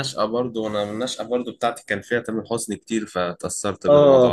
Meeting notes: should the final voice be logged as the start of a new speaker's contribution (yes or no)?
yes